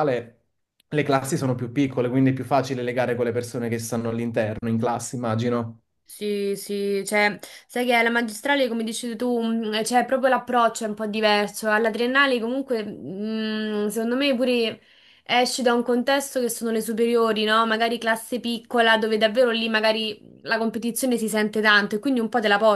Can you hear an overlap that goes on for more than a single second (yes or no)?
no